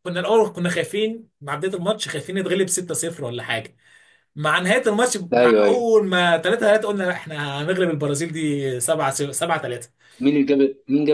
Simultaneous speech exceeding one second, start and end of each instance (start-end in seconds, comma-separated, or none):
none